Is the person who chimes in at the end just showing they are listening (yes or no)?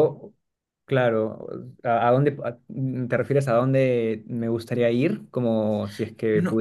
no